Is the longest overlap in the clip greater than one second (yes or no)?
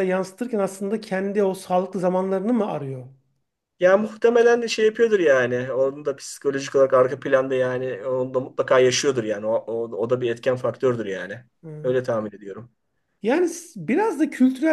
no